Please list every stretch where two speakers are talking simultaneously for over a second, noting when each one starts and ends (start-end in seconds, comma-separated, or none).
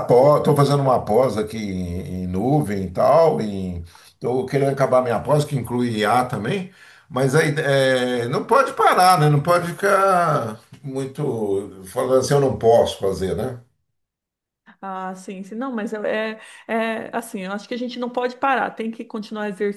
none